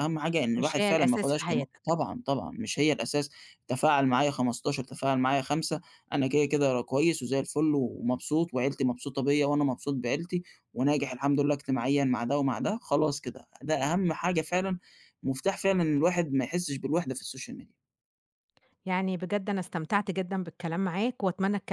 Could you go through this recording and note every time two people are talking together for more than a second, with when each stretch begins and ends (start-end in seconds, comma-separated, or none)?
0.6-1.8